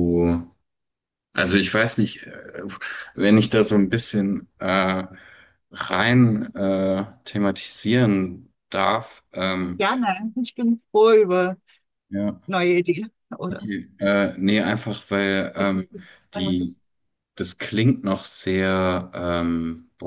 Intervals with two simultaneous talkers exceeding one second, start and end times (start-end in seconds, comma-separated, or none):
none